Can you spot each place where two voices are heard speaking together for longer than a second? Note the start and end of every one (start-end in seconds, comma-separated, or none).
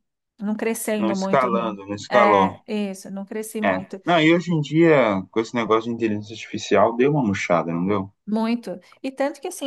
1.0-2.6